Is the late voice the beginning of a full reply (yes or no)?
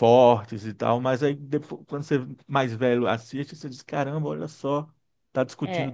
yes